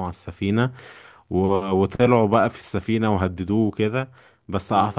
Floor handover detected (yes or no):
no